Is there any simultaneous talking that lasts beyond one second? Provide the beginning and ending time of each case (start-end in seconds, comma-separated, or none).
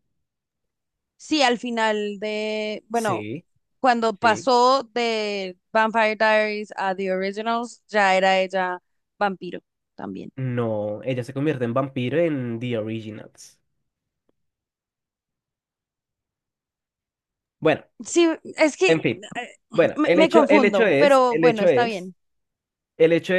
19.9-22.1